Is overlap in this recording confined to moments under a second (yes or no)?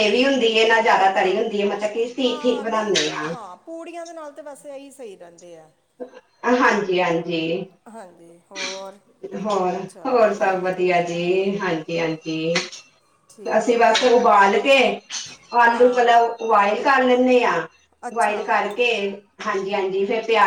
yes